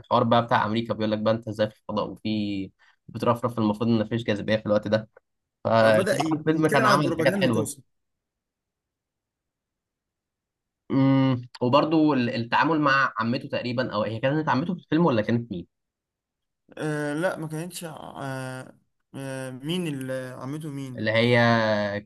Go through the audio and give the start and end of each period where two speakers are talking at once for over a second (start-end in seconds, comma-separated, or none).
5.8-7.7